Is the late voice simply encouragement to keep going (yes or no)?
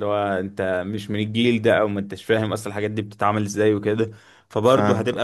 yes